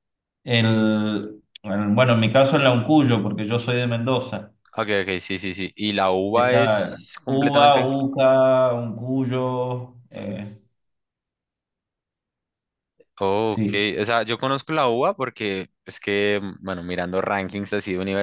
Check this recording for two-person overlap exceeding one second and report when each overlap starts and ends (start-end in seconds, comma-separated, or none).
6.3-7.9